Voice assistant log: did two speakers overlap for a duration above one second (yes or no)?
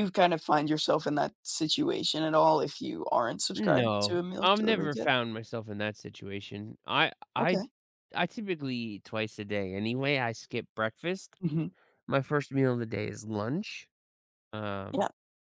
yes